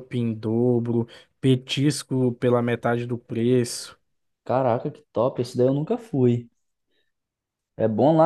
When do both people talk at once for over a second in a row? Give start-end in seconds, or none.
none